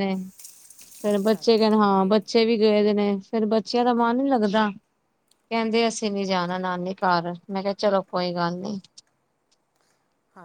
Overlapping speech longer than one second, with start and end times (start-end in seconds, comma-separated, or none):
1.1-2.5